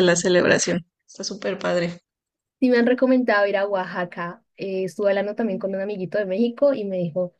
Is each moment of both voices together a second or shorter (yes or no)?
yes